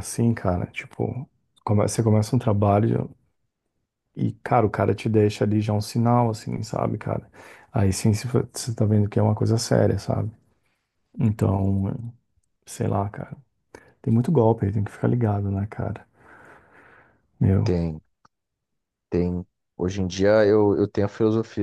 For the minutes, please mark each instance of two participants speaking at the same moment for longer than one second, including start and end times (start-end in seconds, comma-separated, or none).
none